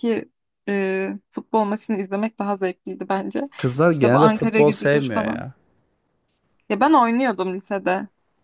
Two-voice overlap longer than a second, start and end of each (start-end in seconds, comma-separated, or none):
3.9-5.4